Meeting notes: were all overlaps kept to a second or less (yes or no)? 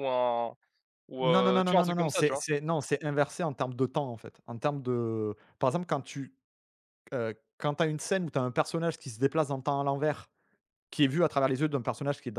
no